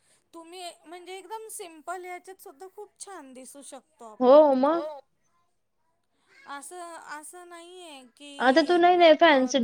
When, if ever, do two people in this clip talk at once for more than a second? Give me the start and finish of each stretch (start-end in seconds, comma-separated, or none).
none